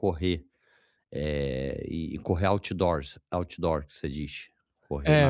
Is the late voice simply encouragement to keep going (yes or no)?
no